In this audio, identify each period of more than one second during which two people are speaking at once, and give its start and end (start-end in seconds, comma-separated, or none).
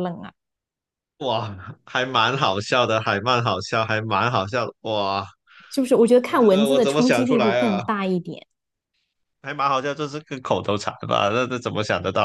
6.4-7.8